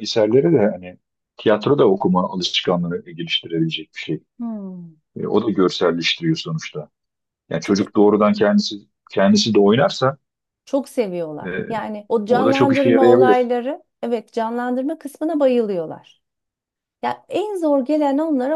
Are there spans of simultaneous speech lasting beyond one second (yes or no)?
yes